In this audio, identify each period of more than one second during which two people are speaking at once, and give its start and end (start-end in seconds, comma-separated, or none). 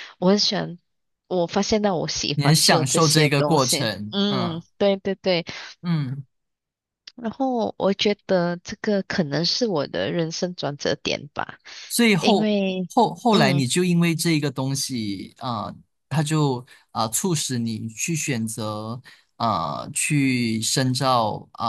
2.3-4.6